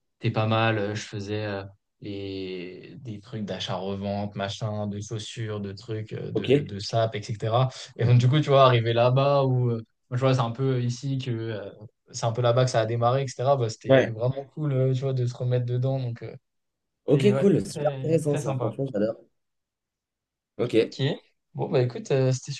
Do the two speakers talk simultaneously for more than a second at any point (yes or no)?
yes